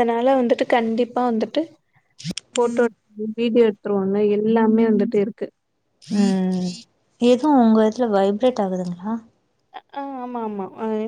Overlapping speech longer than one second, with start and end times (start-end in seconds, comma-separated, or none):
none